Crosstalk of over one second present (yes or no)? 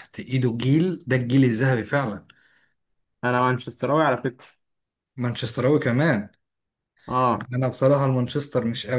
no